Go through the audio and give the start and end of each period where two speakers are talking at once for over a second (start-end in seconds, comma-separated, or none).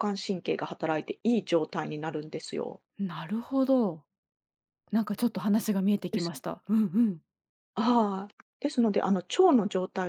none